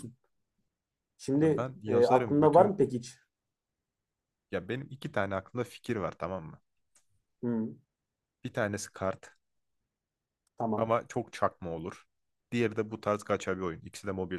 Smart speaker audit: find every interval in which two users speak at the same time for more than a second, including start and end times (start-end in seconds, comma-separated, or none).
1.4-2.8